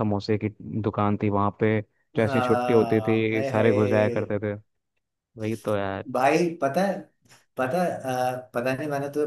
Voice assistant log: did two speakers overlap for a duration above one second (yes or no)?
yes